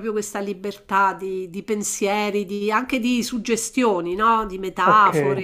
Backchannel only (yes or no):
no